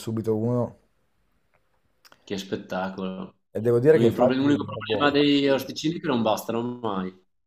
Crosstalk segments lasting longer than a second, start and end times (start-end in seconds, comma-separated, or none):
3.9-5.2